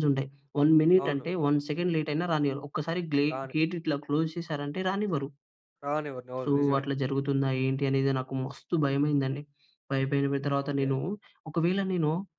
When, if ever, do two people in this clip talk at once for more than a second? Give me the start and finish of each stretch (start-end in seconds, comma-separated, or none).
none